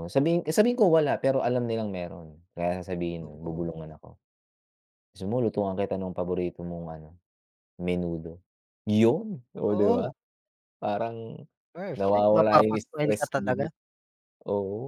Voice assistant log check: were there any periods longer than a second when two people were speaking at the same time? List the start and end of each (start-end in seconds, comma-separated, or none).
11.9-13.7